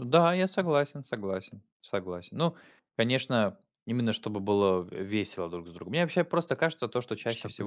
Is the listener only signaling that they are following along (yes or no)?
yes